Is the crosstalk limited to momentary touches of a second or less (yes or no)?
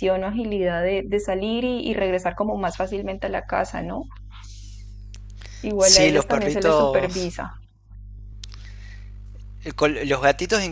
no